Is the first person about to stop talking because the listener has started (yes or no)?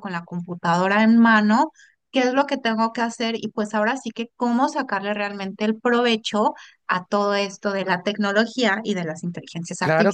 yes